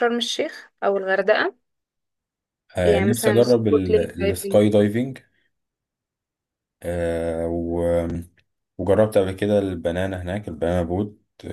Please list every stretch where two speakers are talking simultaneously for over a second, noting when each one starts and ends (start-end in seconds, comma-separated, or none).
2.8-4.6